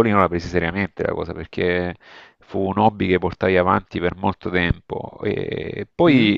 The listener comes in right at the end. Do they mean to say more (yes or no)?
no